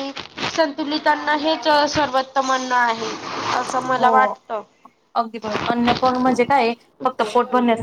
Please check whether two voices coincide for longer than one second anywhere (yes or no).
no